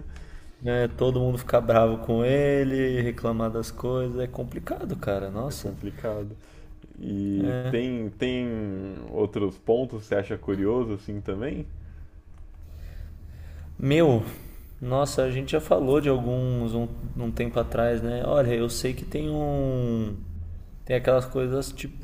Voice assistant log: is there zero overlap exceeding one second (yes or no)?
yes